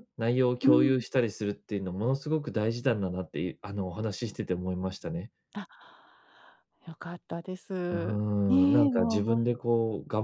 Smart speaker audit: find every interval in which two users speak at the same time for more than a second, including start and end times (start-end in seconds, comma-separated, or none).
7.9-9.5